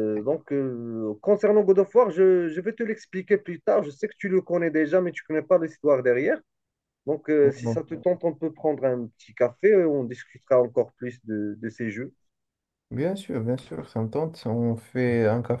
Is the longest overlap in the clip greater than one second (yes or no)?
no